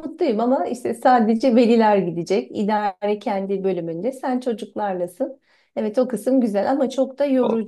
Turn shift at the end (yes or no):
yes